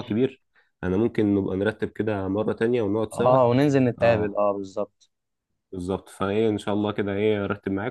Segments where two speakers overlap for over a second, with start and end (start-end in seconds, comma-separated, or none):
none